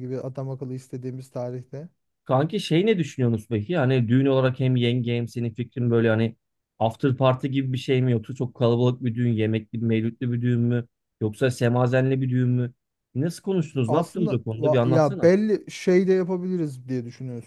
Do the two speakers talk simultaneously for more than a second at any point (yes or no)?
yes